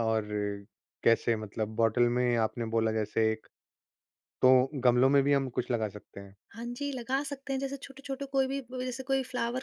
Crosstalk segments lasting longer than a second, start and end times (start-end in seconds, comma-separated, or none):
none